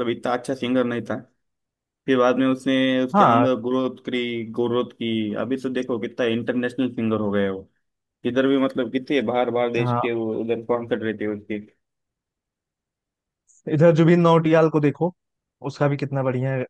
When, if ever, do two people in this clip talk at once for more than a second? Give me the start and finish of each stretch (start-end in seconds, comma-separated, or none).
none